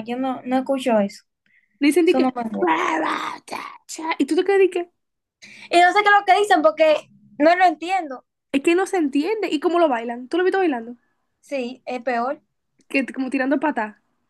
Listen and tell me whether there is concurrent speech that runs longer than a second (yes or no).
no